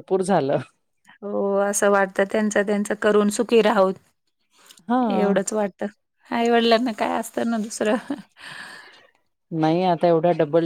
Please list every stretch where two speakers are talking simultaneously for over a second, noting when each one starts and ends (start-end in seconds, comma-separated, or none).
none